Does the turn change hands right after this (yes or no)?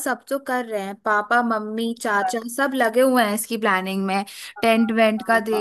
no